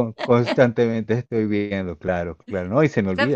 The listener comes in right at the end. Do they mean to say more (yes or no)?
yes